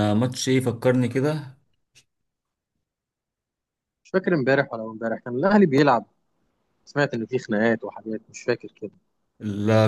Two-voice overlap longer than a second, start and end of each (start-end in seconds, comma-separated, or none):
none